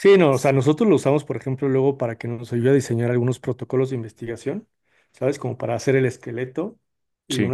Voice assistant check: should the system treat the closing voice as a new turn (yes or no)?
no